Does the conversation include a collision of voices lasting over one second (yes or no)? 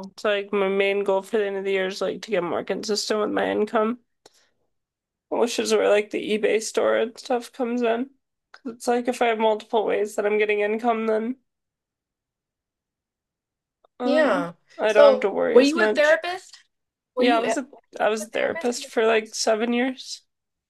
yes